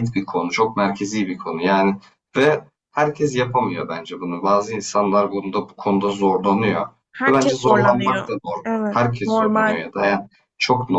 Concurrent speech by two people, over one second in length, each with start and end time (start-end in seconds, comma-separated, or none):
7.3-9.8